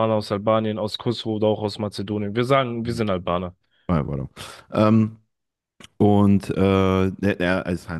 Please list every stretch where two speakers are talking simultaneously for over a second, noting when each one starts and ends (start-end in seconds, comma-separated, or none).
none